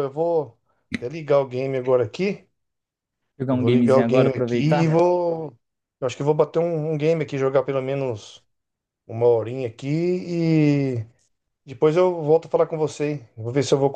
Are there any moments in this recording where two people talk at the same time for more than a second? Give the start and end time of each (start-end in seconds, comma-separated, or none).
3.5-4.9